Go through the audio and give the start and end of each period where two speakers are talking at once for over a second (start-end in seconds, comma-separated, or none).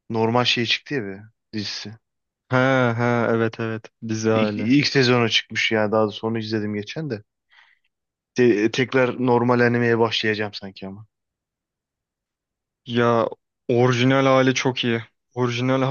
none